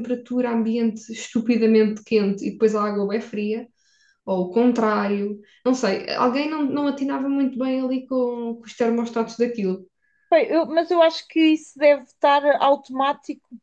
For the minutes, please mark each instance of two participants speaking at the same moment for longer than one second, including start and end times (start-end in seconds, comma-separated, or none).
none